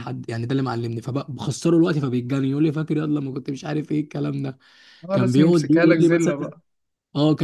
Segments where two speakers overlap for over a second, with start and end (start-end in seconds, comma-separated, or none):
5.1-6.3